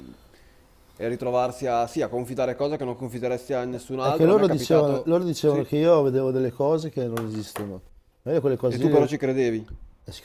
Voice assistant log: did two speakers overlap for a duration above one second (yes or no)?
yes